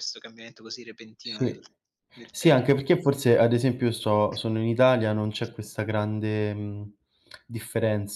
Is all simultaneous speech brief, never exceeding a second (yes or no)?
yes